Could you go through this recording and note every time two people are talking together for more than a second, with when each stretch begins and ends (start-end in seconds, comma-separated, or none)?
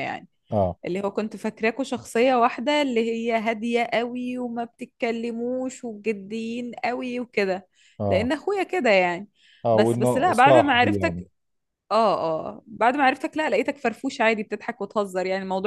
9.7-11.2